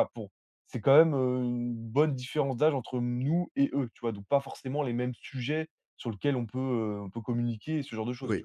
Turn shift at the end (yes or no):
yes